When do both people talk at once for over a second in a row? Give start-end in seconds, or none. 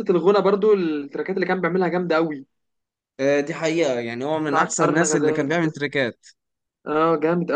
4.5-5.8